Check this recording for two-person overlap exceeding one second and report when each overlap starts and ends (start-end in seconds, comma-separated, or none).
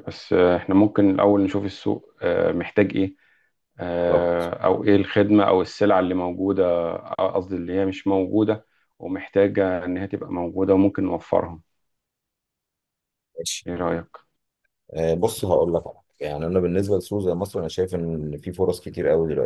none